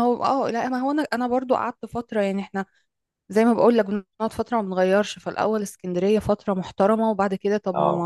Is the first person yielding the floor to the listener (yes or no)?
no